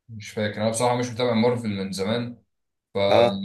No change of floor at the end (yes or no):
yes